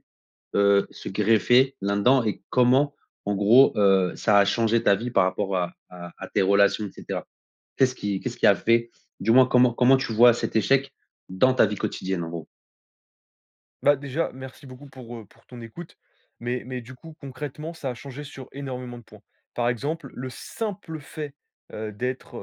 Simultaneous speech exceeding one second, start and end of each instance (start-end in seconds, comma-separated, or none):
none